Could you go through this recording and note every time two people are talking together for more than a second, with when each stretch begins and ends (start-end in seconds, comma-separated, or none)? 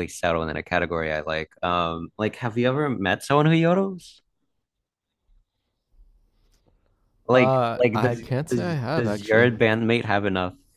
7.3-9.5